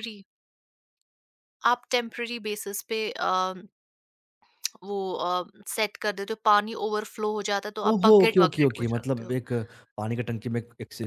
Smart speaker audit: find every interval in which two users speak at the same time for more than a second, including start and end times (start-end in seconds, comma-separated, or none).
7.9-9.3